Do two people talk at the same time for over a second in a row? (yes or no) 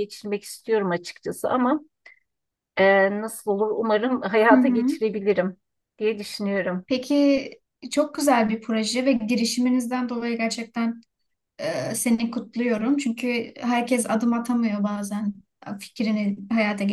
no